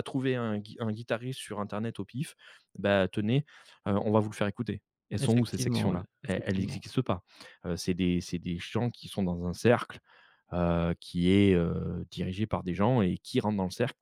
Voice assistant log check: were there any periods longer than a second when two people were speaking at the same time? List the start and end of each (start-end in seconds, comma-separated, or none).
5.2-6.8